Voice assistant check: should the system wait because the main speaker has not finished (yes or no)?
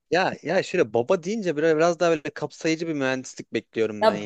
no